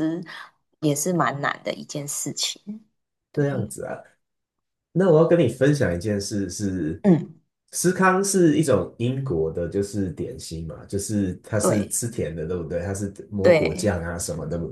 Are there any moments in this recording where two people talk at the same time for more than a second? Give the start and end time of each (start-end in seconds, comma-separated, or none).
none